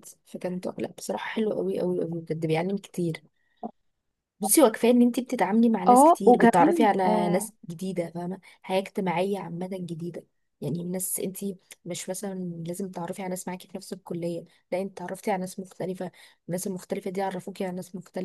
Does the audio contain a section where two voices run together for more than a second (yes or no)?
yes